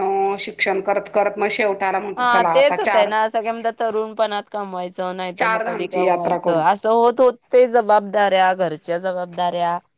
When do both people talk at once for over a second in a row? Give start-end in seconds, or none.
5.4-6.6